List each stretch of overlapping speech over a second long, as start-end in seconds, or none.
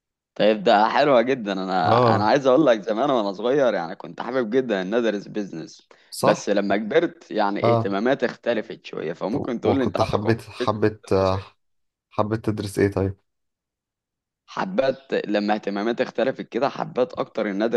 9.6-11.1